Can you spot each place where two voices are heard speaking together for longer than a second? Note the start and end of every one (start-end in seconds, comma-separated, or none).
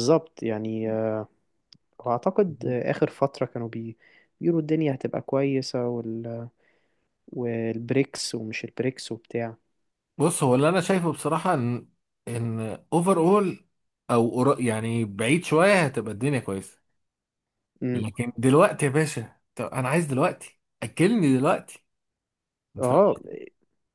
none